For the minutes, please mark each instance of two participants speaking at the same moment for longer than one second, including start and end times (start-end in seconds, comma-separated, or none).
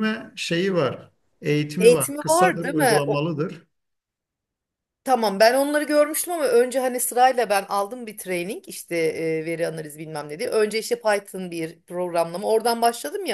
1.8-3.2